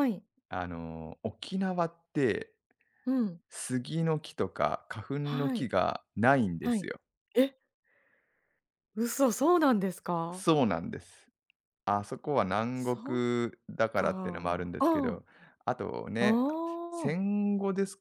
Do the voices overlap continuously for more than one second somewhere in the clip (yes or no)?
yes